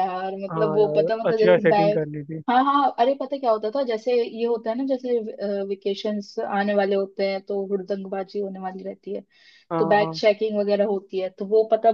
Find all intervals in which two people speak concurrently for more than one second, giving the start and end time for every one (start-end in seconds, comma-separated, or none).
0.5-2.0